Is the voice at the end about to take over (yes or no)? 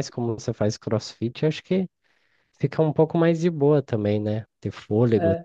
yes